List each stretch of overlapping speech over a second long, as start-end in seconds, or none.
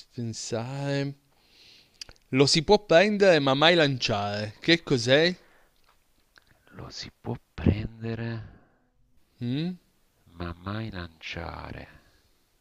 none